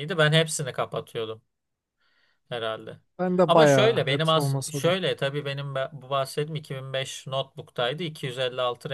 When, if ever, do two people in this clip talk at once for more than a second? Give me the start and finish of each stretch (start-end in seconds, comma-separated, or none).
3.5-5.0